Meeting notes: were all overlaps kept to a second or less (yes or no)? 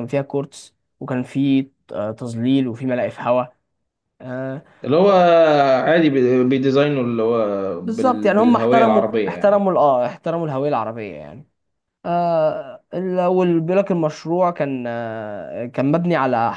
no